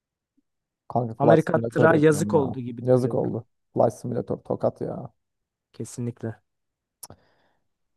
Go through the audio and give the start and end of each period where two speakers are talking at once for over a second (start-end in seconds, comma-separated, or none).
1.2-3.4